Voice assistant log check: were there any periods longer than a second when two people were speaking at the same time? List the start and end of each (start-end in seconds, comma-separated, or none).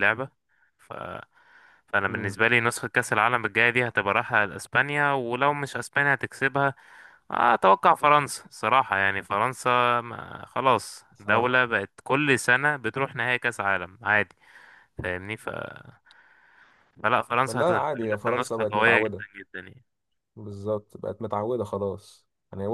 17.4-19.2